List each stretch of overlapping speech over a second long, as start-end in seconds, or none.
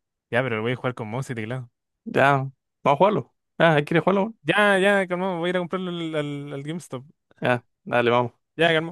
none